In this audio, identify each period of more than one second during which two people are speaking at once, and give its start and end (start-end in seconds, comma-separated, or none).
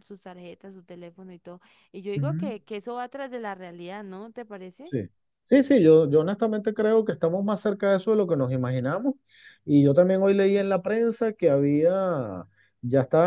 none